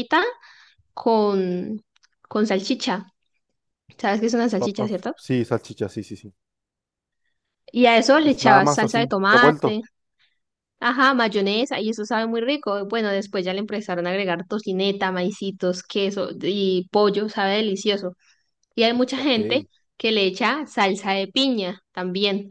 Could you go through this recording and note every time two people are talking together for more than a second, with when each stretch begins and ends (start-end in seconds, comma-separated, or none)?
8.2-9.8